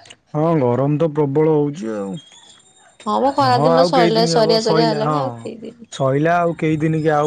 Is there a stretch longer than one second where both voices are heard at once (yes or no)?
yes